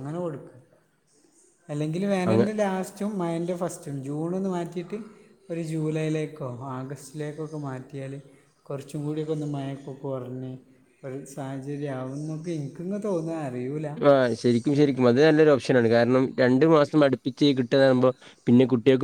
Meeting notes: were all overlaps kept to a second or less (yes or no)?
yes